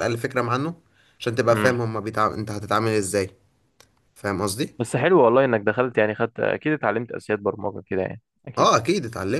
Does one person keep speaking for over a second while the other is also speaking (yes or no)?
no